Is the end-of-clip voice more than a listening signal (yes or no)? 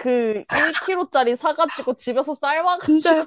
yes